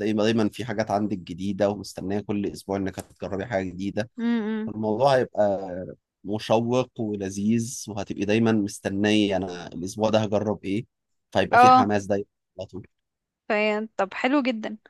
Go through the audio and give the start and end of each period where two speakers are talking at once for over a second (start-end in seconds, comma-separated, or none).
none